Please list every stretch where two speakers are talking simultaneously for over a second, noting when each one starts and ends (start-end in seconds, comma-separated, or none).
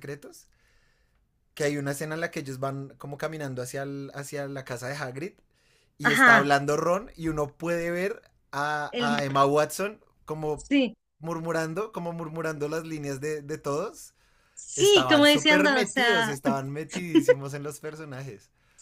14.8-16.3